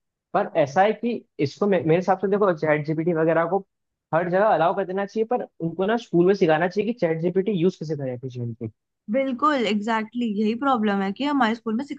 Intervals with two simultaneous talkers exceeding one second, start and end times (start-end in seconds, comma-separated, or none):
none